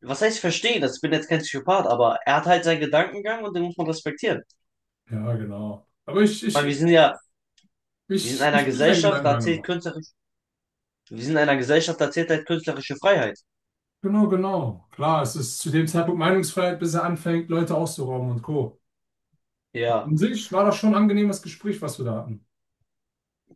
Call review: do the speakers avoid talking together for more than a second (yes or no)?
no